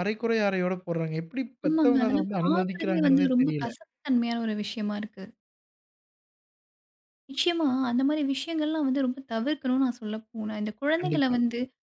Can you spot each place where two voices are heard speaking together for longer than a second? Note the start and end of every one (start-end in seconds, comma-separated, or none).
1.7-3.7